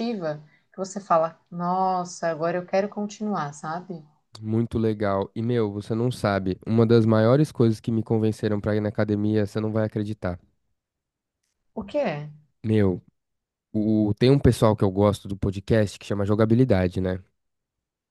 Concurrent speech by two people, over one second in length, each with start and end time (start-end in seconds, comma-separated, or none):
none